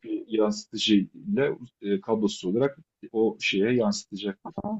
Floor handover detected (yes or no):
yes